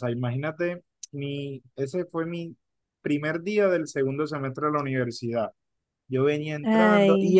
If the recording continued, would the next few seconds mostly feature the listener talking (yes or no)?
no